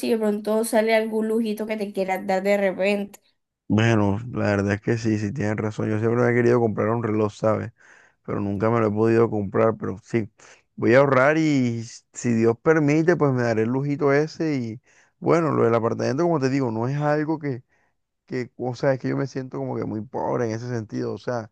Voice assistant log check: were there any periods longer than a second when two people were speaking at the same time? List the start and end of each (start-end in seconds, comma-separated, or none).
none